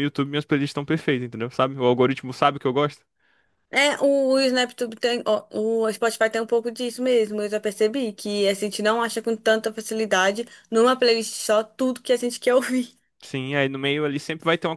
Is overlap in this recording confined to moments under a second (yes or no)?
yes